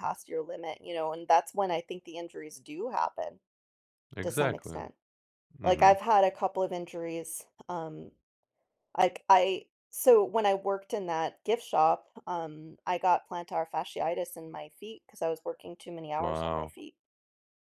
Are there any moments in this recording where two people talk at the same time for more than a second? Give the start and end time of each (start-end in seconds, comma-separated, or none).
none